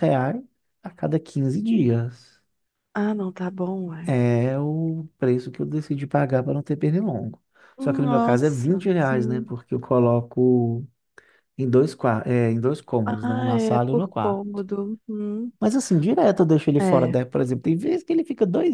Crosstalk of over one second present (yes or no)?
yes